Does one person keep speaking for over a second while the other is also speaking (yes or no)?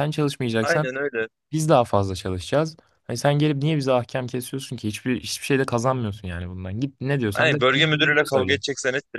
yes